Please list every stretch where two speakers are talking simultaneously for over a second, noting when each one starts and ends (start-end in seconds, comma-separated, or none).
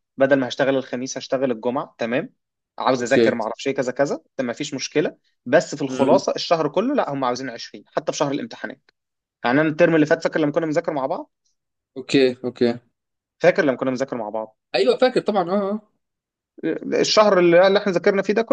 none